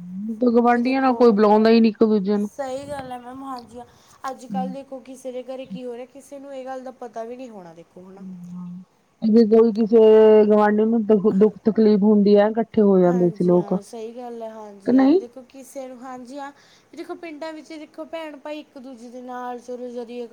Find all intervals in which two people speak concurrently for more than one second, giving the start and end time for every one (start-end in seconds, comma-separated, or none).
none